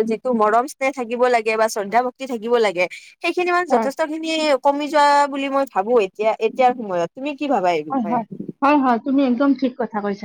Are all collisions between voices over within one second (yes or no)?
yes